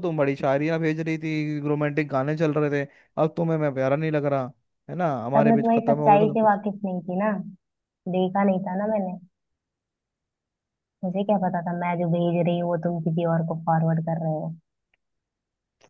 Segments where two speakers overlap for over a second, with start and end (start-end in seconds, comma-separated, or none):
5.3-6.6